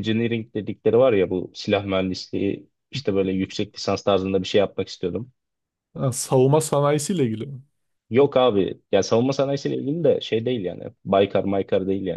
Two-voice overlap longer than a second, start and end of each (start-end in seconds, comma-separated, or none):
none